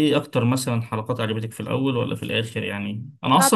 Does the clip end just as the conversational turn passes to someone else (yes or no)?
no